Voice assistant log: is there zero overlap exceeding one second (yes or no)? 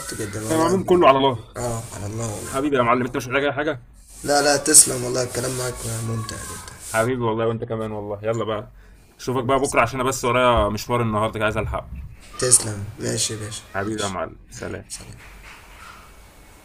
yes